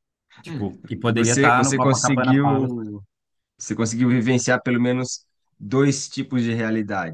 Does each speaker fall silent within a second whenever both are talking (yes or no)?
no